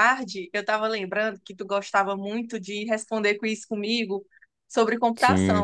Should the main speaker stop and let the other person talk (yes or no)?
no